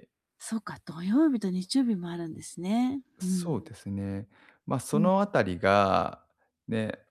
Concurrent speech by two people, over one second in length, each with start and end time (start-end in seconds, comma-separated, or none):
none